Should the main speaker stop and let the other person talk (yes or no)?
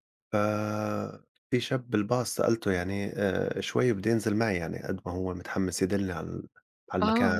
yes